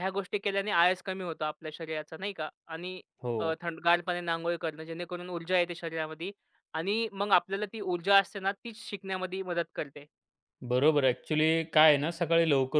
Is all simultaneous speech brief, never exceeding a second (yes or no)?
yes